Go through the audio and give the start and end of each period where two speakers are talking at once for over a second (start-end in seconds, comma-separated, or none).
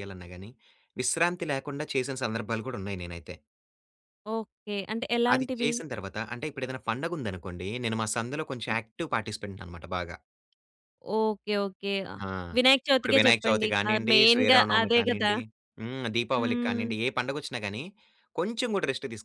13.0-15.3